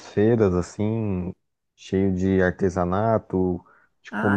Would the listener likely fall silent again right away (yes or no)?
yes